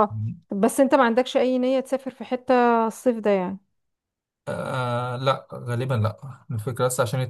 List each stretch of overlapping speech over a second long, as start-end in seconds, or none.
none